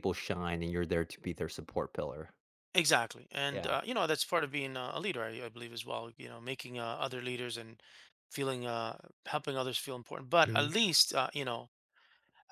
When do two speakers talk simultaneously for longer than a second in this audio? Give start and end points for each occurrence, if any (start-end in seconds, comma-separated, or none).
none